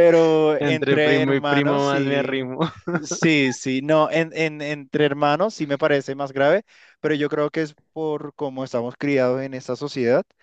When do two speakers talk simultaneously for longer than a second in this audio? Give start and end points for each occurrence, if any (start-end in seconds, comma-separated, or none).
0.6-2.5